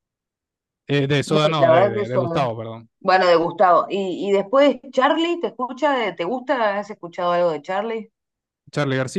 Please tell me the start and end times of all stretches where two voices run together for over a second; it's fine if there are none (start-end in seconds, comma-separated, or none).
1.2-2.5